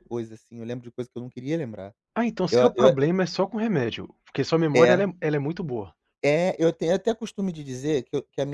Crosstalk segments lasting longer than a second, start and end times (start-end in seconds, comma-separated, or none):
none